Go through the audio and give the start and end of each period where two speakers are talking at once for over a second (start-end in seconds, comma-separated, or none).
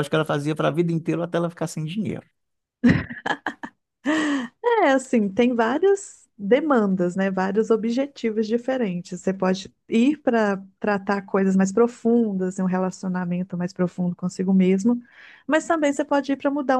none